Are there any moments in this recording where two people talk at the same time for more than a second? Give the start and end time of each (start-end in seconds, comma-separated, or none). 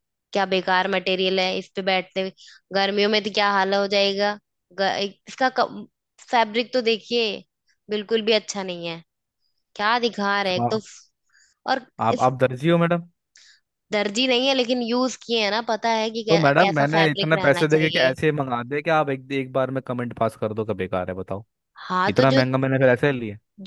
16.3-18.1